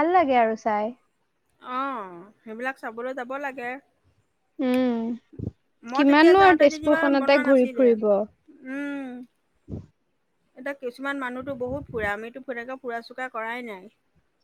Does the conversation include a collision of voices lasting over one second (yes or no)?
yes